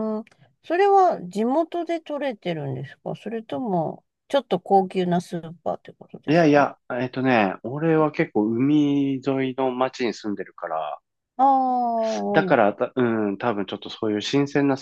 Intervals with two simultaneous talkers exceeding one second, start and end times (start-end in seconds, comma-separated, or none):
none